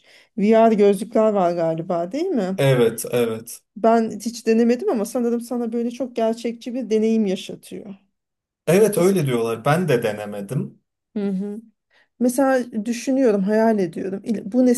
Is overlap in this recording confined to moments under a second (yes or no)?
yes